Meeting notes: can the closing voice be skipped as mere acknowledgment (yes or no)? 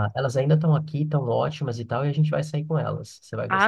no